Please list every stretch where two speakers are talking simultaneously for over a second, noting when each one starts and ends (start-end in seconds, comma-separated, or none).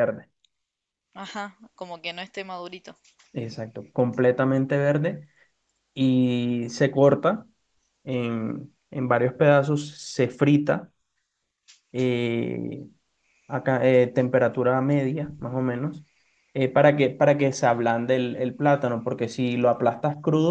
none